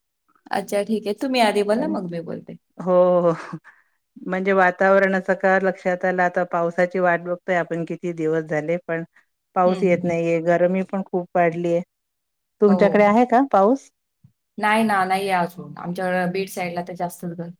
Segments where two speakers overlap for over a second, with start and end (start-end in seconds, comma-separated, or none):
none